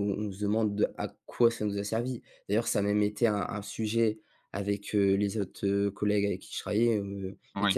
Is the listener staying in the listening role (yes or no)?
yes